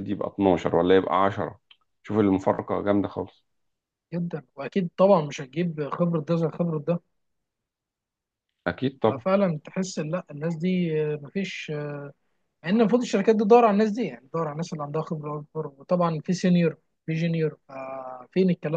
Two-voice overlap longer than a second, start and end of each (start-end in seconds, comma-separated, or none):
none